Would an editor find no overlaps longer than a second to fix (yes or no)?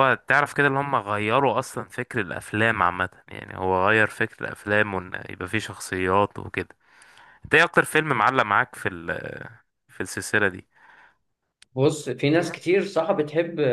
yes